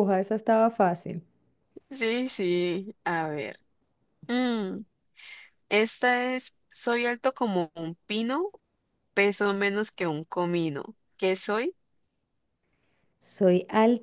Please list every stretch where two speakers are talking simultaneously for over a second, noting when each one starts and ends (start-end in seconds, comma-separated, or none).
none